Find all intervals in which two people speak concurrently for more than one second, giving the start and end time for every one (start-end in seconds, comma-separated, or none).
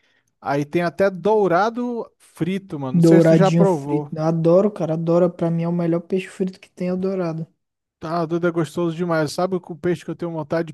2.9-4.2